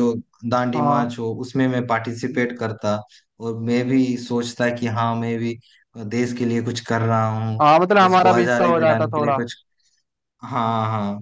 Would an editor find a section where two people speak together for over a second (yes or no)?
yes